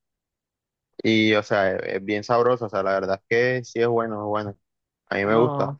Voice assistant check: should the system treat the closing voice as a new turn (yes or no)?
no